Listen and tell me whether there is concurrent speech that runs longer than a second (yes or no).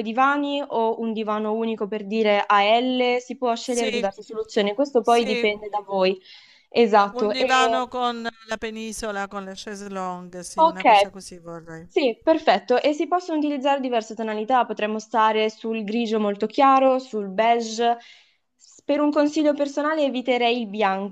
no